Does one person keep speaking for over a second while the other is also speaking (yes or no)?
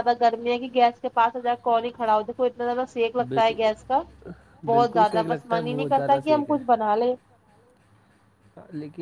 yes